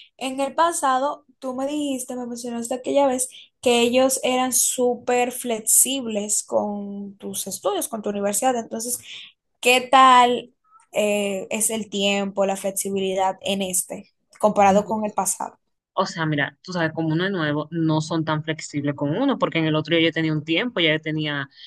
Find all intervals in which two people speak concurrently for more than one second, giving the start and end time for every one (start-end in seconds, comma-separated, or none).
none